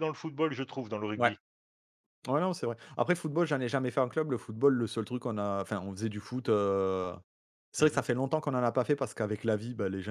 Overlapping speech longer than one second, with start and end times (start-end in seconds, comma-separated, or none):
none